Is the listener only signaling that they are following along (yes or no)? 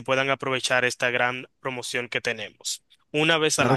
no